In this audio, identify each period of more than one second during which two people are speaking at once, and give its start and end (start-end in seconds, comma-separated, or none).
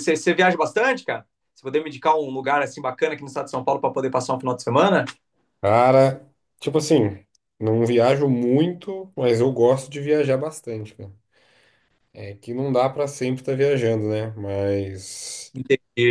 none